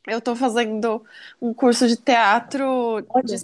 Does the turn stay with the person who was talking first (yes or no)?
yes